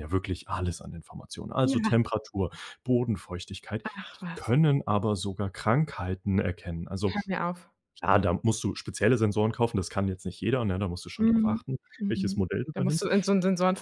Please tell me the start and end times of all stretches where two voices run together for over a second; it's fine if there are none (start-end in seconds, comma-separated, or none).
11.2-13.1